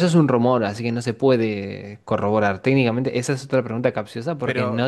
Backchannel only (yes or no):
no